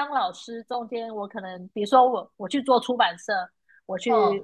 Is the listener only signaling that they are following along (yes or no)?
yes